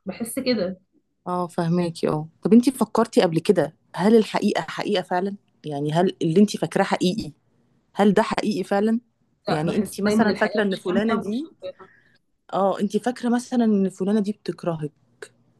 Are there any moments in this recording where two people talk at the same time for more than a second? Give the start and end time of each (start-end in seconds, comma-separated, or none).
9.5-11.5